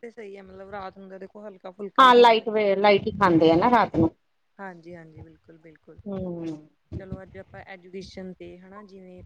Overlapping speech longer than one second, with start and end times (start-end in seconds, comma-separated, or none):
none